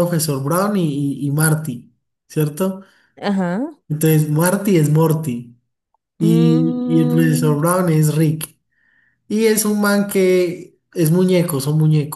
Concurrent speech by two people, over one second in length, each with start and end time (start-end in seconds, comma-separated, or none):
6.2-7.6